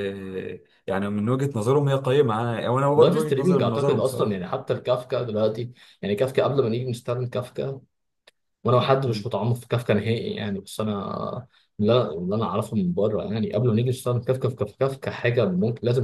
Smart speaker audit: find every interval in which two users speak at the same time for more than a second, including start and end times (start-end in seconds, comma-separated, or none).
3.0-4.5